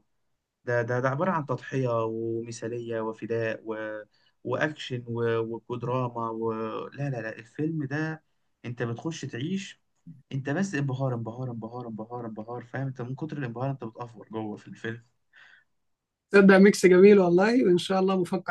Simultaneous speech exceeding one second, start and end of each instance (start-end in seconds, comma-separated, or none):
none